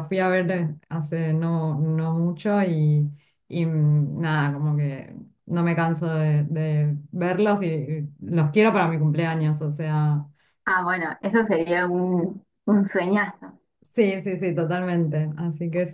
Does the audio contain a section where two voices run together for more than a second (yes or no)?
no